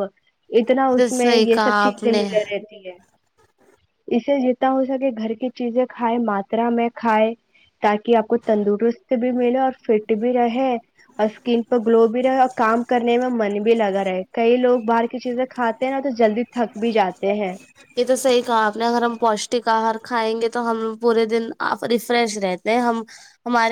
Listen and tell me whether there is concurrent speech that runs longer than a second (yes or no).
yes